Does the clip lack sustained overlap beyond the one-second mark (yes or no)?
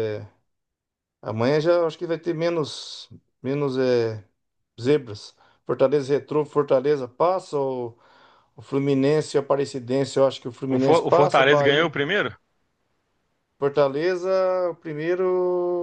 no